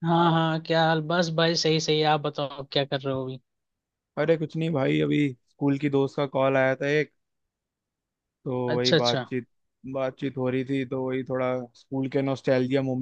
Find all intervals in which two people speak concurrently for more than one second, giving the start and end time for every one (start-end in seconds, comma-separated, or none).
none